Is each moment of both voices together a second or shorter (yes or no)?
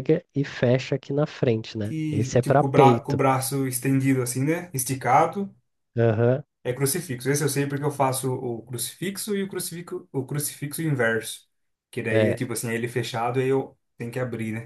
no